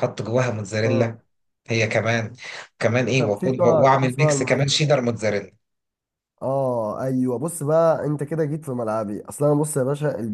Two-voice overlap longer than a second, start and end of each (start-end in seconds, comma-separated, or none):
3.2-4.7